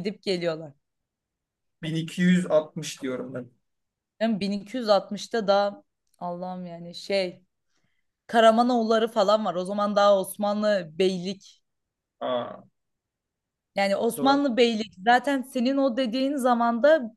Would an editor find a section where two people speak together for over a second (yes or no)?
no